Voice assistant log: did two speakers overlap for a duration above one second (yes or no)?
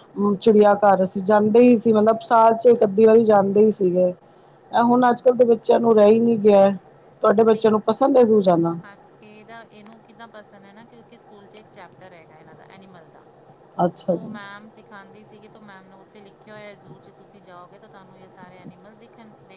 no